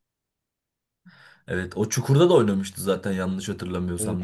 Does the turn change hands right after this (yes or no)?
yes